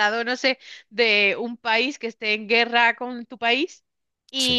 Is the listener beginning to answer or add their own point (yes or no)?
no